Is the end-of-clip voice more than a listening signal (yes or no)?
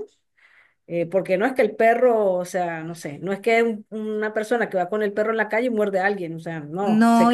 yes